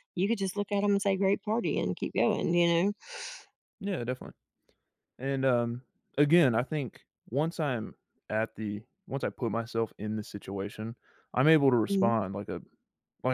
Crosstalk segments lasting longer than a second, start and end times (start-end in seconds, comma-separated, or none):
none